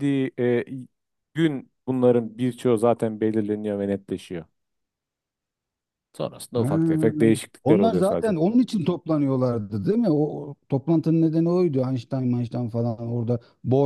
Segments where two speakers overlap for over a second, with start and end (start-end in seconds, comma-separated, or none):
6.5-8.4